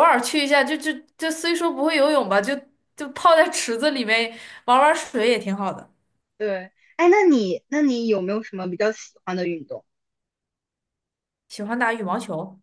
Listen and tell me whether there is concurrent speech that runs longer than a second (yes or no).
no